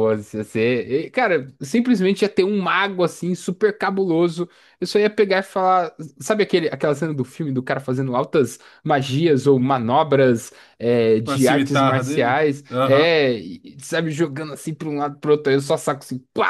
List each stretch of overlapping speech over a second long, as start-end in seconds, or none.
11.2-13.1